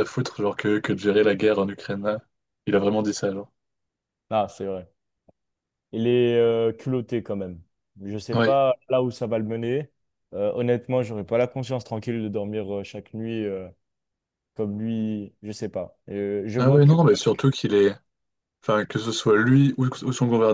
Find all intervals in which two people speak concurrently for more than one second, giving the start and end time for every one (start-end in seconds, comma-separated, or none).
none